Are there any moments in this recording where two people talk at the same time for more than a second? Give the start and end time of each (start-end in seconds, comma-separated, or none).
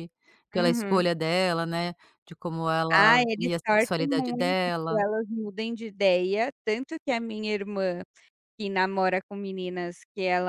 2.9-5.0